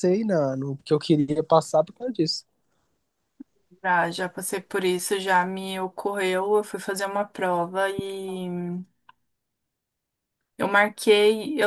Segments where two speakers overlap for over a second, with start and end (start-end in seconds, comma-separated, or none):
none